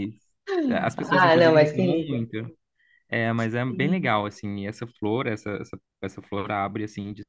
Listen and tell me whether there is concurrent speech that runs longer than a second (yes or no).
yes